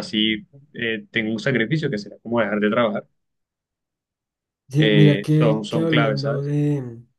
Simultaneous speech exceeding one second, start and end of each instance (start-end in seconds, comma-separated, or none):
4.8-6.5